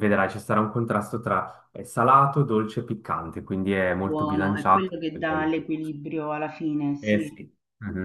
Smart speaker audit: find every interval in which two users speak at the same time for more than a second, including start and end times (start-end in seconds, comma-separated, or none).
4.0-5.9